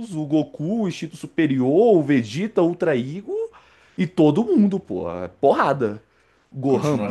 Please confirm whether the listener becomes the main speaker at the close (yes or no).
yes